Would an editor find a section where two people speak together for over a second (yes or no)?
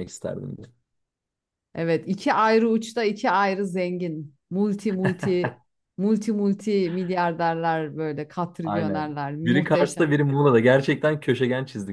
yes